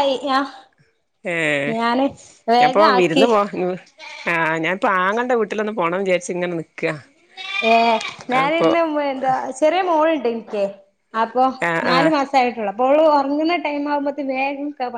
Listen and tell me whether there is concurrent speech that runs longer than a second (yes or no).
no